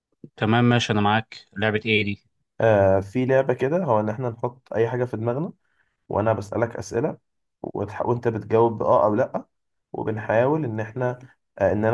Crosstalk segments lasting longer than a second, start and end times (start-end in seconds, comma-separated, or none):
none